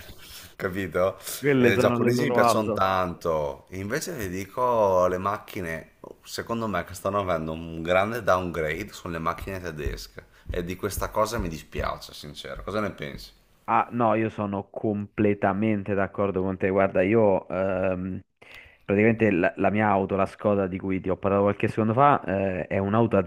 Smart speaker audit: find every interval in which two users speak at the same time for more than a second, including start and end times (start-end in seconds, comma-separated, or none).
1.6-2.8